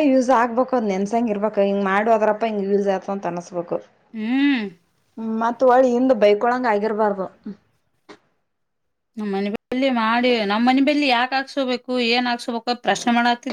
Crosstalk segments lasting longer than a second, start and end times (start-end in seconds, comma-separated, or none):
none